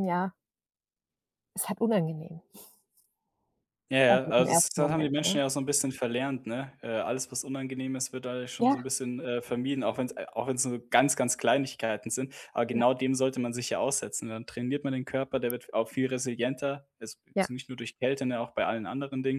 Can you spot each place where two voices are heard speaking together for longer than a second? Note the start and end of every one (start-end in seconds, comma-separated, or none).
4.1-5.4